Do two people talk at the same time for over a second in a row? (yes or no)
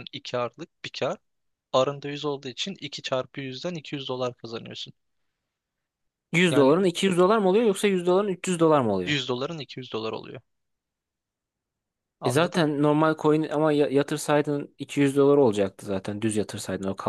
no